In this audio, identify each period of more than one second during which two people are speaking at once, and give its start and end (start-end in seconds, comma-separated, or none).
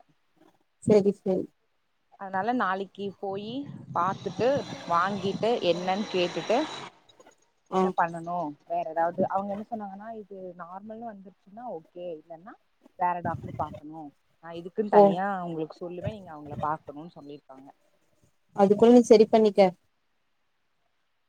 none